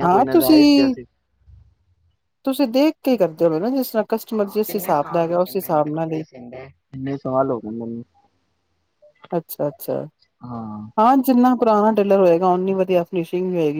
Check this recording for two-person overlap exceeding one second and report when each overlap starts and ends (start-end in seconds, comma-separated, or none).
4.3-6.2